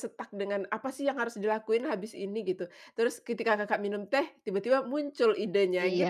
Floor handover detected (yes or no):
yes